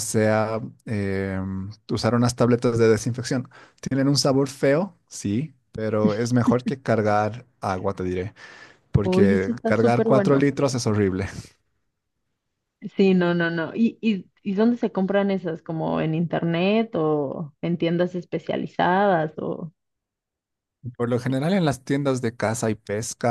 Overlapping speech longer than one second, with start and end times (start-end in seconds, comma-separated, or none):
9.1-10.5